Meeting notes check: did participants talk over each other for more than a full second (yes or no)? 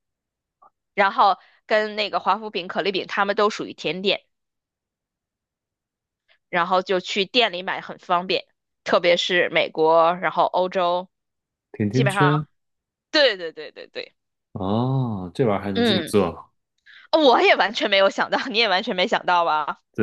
no